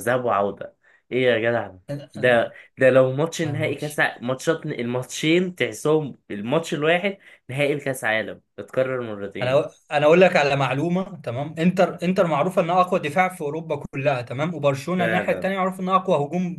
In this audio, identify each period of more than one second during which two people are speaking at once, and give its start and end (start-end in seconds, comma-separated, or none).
none